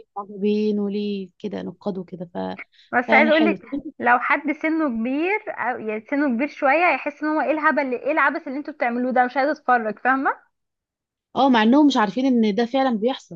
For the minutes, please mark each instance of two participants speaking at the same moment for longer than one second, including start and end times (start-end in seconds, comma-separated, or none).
none